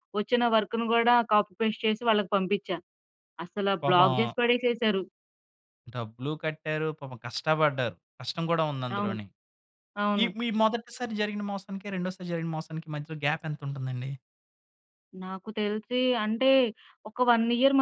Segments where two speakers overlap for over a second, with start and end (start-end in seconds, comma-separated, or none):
none